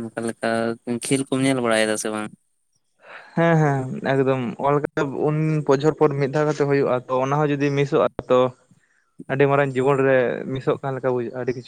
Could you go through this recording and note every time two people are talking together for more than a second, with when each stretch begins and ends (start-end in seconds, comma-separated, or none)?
none